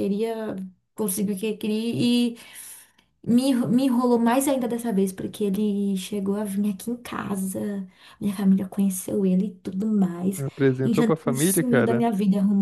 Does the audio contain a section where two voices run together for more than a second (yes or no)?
yes